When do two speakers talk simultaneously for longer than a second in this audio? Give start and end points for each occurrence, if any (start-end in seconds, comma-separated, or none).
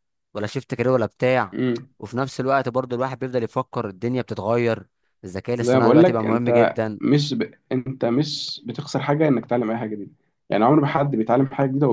5.6-7.0